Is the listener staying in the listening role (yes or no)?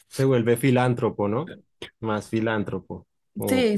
no